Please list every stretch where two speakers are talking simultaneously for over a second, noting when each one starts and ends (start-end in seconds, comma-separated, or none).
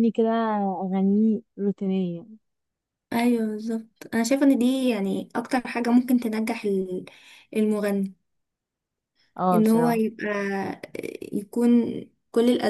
none